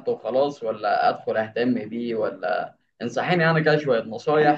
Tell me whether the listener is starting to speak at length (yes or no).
no